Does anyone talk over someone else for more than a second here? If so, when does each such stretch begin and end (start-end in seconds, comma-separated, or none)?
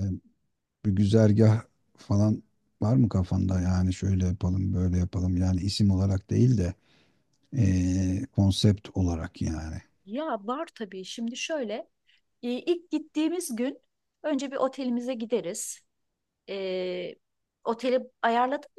none